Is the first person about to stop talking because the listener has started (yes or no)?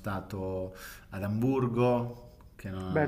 yes